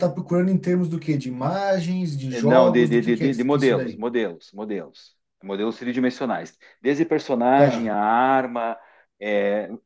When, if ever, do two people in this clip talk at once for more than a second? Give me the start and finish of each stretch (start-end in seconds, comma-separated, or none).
2.3-4.0